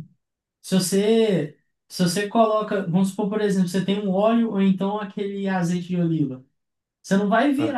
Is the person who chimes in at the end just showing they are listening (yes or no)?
yes